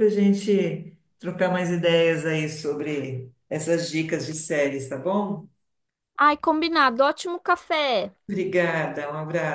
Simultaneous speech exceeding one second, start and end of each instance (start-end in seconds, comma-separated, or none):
none